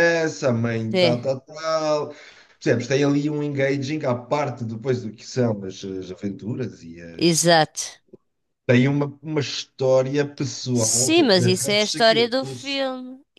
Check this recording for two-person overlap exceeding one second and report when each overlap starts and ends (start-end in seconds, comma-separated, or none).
10.7-12.8